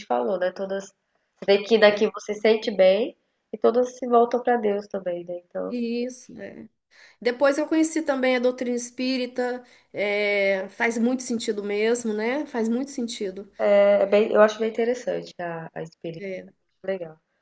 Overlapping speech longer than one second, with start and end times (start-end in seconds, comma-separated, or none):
none